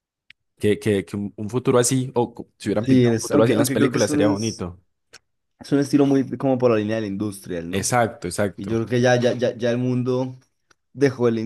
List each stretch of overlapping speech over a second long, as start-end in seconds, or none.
2.8-4.7